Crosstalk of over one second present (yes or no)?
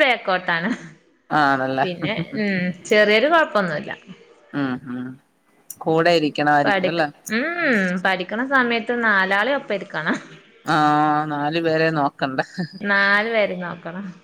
no